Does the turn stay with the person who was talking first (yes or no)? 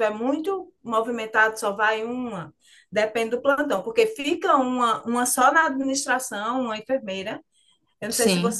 yes